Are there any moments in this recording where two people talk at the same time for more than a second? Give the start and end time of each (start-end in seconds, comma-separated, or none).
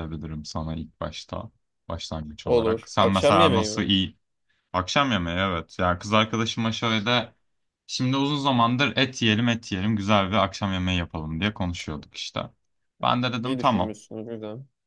2.5-3.9